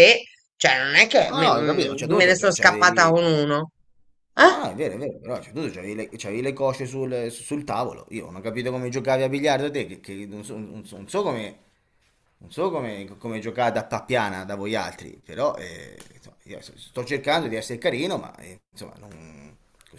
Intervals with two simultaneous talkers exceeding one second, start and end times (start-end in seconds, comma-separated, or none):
1.3-3.3